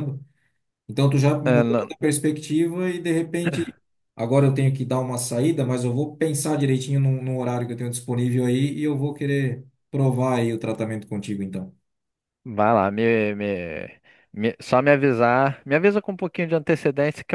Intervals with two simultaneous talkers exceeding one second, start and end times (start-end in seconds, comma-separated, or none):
none